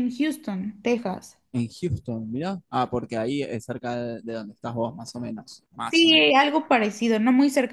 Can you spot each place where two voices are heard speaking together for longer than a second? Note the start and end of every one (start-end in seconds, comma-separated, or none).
none